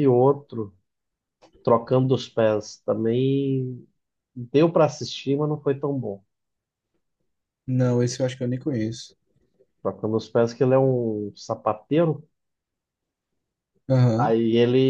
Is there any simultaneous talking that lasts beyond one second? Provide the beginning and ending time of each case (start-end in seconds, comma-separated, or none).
none